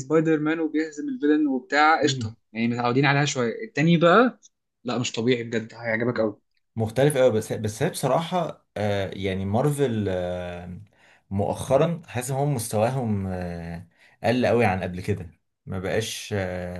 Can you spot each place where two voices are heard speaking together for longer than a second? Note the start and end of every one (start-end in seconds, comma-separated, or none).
none